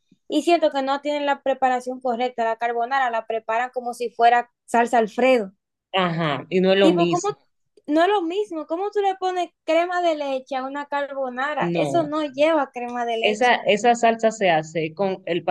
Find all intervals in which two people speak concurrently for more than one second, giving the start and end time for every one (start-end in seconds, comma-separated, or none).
none